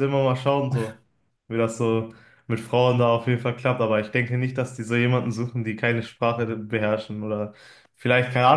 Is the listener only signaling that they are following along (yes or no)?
yes